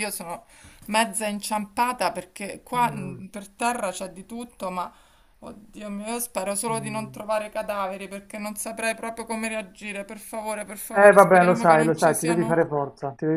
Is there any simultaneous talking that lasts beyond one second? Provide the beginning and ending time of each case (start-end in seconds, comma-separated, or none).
10.9-12.6